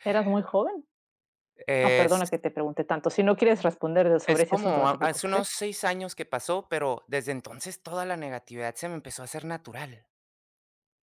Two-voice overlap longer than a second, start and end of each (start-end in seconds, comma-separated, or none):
4.2-5.5